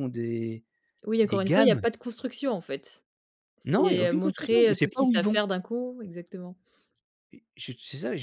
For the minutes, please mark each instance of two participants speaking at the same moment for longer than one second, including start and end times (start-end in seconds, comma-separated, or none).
3.6-5.4